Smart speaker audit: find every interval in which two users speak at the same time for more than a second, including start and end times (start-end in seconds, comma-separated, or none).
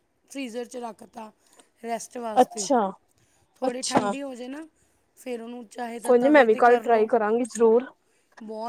none